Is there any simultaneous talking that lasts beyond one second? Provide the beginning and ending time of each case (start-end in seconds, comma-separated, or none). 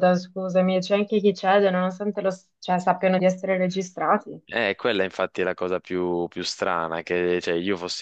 none